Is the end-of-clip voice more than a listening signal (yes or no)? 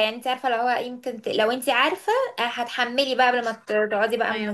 yes